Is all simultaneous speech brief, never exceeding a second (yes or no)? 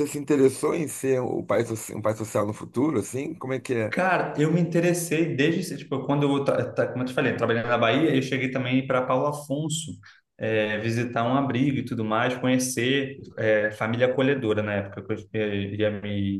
yes